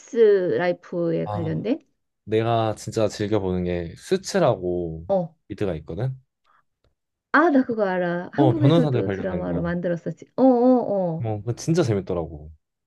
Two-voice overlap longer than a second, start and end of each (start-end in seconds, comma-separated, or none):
8.4-9.7